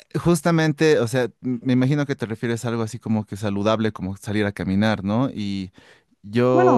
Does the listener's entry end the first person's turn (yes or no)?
yes